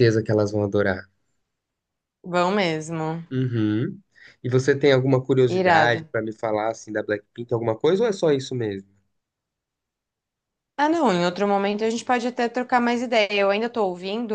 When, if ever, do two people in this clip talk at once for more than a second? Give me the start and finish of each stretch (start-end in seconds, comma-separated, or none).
none